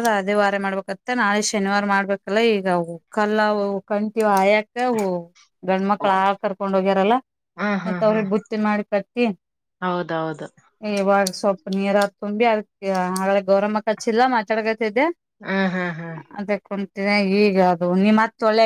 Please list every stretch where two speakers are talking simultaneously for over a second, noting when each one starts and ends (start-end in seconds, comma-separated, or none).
none